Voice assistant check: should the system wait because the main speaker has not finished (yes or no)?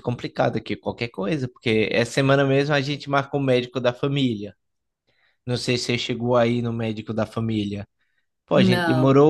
yes